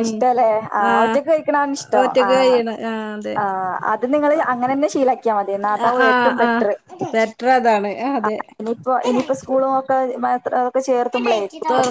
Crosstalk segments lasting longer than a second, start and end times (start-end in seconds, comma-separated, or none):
none